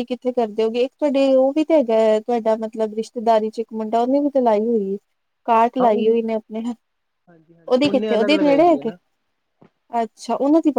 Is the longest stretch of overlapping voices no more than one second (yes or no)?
no